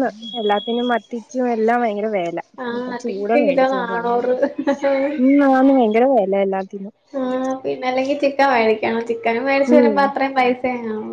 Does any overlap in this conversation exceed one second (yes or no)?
yes